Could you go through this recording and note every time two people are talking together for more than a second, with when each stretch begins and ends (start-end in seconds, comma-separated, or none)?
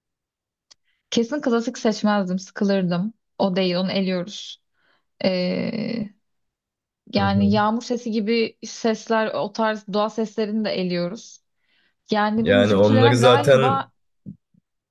12.4-13.9